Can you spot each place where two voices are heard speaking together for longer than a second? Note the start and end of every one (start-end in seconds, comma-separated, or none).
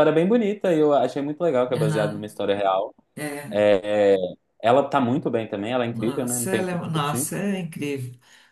5.9-7.3